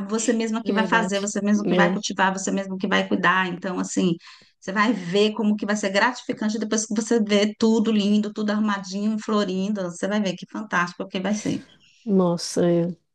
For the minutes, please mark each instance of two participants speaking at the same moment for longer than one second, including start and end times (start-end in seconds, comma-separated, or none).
0.6-2.0